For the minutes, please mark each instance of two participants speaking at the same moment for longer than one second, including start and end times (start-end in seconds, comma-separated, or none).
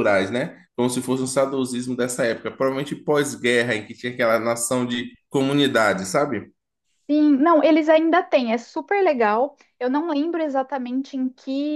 none